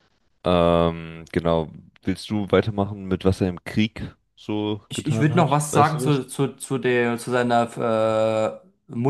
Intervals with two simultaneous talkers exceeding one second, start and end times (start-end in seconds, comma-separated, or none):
4.9-6.2